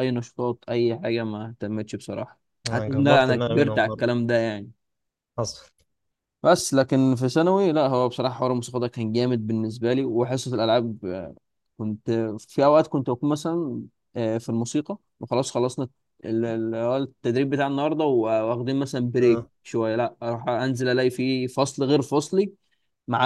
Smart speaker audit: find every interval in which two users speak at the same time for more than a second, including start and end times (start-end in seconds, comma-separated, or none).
2.7-4.0